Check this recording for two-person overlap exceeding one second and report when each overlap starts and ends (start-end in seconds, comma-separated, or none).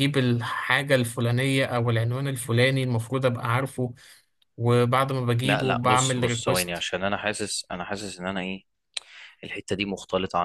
5.4-6.9